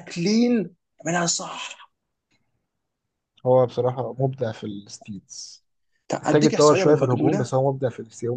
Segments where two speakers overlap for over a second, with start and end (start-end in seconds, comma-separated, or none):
6.2-7.5